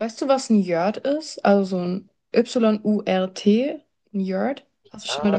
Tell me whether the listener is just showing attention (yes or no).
no